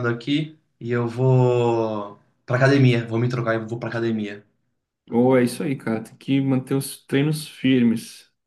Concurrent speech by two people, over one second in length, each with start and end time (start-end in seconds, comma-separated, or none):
none